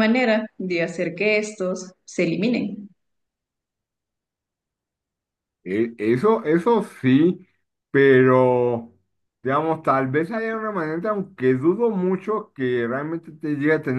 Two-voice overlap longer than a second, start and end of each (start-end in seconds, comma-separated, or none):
none